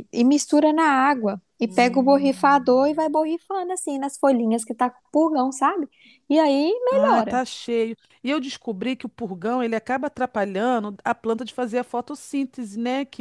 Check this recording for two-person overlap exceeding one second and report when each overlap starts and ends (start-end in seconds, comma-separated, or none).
1.6-2.9